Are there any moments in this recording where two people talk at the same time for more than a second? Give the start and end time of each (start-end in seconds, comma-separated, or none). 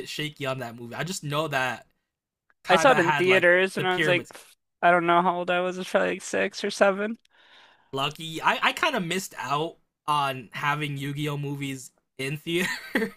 2.7-4.3